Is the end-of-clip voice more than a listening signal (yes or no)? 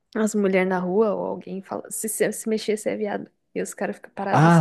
yes